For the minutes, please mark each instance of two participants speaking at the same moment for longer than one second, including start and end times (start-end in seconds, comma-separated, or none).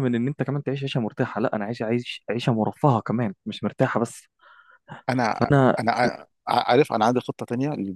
none